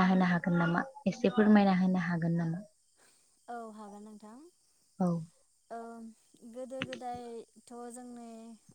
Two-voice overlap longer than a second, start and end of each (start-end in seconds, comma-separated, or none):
none